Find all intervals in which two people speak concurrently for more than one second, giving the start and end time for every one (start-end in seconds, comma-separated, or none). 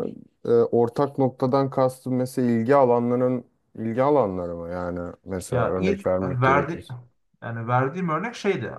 5.5-6.9